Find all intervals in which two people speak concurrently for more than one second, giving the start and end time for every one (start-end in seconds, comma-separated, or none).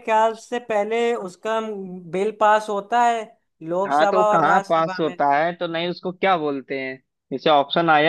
3.9-5.2